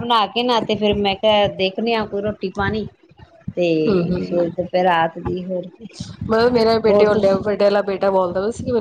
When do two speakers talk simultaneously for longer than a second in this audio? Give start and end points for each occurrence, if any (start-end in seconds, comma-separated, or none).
none